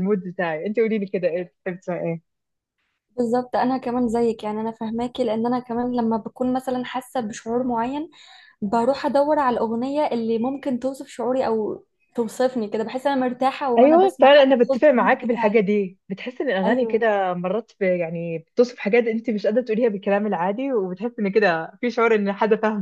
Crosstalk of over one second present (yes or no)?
yes